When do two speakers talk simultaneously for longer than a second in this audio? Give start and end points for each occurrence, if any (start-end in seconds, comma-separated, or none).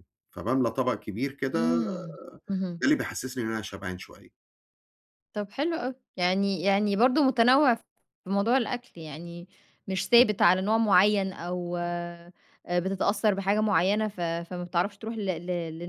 none